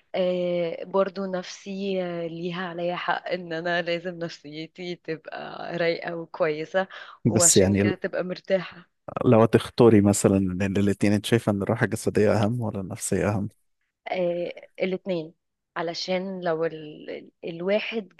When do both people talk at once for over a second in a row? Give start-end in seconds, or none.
none